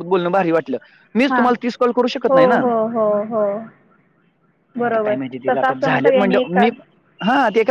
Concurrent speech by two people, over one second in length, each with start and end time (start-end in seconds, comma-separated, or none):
4.8-6.7